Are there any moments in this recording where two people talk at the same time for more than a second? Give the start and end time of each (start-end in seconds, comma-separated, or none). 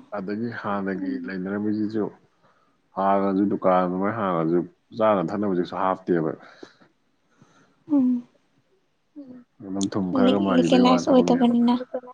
10.2-11.5